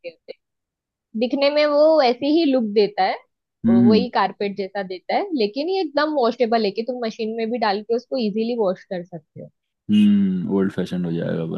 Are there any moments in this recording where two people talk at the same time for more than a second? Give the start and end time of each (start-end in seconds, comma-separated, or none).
none